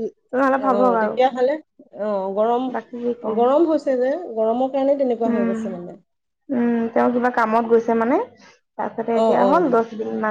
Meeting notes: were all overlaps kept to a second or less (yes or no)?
yes